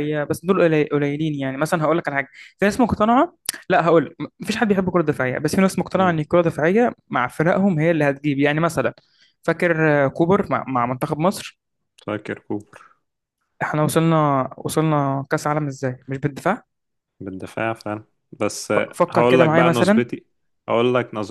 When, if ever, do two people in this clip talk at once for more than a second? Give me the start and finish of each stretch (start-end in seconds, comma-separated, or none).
18.7-20.1